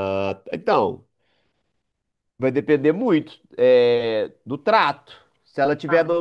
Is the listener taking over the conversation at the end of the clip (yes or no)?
no